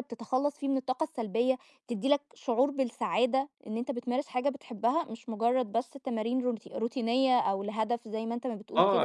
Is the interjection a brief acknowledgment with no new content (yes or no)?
no